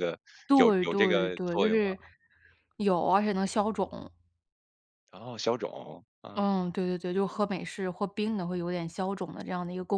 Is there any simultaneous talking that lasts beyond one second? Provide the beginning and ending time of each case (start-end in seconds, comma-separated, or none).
0.5-1.8